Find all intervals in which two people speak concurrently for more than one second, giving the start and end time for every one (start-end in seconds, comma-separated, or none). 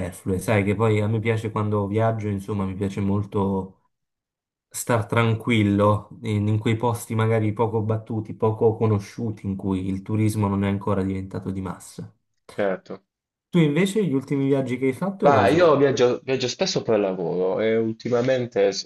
none